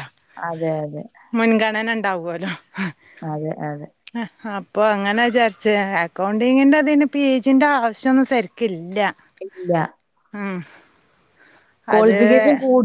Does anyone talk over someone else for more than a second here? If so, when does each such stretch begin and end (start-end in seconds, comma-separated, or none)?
none